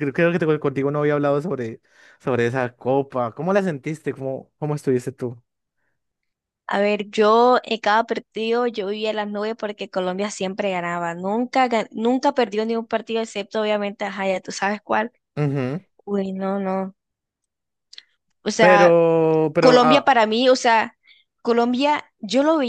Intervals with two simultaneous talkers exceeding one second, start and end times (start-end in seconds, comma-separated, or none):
none